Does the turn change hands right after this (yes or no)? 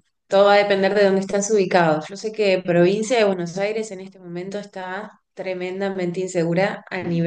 no